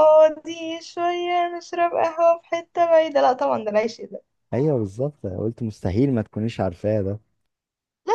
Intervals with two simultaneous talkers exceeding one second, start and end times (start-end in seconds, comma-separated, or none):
none